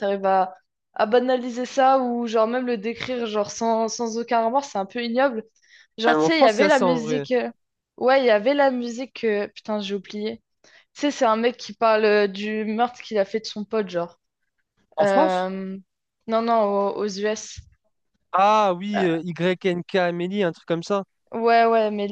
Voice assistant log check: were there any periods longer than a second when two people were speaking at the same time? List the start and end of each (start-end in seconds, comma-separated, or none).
6.1-7.3